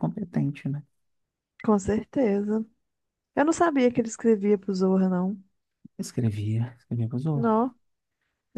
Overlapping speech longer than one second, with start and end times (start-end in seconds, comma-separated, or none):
none